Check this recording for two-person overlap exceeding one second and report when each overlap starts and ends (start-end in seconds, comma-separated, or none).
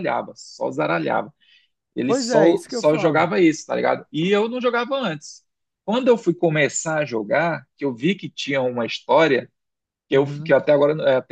2.1-3.3